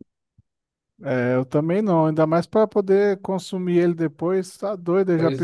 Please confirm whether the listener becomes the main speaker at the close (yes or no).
yes